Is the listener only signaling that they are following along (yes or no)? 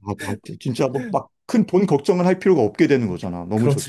no